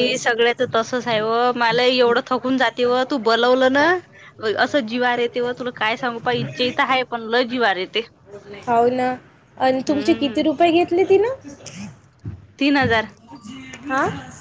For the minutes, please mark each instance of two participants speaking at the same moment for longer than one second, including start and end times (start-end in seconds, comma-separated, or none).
none